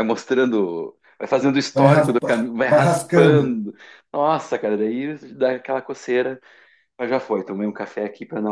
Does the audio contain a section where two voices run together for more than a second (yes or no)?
yes